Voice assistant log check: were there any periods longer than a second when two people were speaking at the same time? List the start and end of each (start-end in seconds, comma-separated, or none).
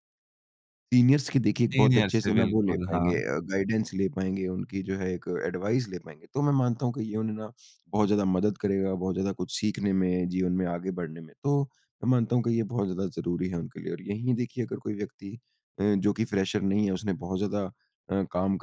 1.7-3.2